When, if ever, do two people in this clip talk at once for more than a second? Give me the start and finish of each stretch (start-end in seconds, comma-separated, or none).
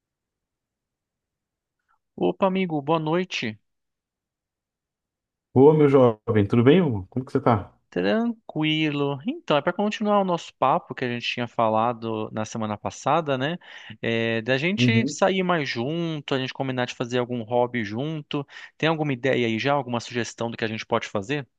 none